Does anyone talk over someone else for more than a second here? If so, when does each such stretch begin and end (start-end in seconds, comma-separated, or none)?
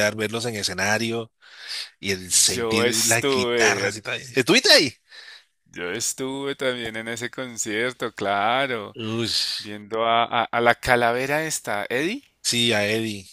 2.5-3.9